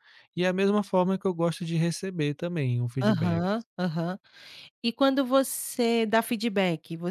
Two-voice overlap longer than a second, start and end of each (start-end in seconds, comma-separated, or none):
none